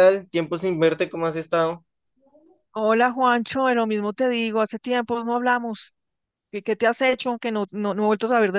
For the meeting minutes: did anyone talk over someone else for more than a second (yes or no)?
no